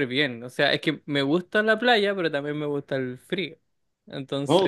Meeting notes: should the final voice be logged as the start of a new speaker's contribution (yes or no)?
no